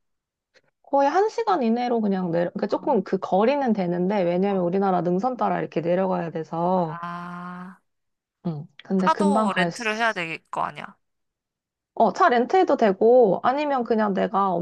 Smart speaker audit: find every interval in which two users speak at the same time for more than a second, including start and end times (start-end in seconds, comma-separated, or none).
9.0-10.2